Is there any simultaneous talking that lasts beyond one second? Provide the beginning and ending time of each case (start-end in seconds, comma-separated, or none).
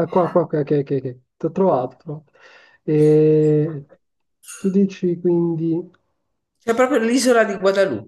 none